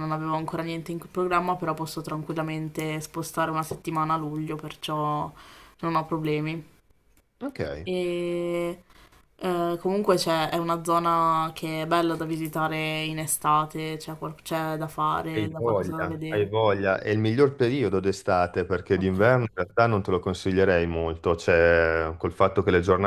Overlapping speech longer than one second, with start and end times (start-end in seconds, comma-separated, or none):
15.3-16.5